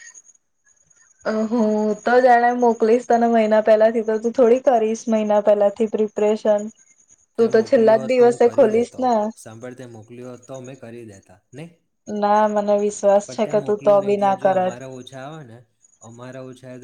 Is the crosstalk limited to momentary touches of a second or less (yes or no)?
no